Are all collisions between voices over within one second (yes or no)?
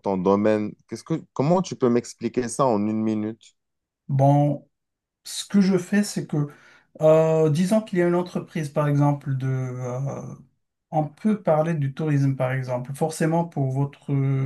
yes